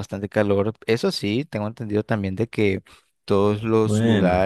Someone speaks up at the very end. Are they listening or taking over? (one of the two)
listening